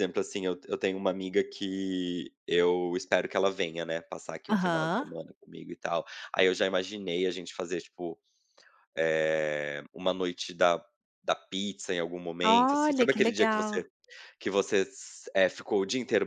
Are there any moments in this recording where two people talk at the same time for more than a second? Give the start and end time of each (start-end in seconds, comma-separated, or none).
12.5-13.8